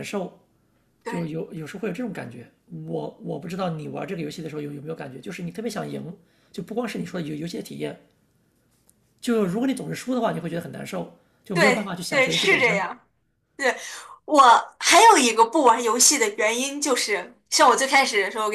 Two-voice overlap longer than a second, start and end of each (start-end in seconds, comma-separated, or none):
11.5-12.9